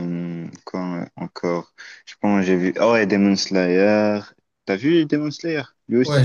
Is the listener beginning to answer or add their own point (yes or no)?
yes